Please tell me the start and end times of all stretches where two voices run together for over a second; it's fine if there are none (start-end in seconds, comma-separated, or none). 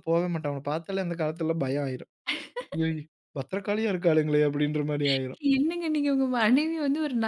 none